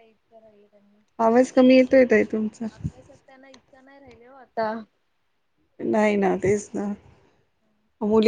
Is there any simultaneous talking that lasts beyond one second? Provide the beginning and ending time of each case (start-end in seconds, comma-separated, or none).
none